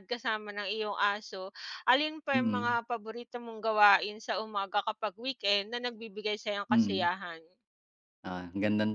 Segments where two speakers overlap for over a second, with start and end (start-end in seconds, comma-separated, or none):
none